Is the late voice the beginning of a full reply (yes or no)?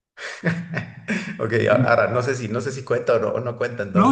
yes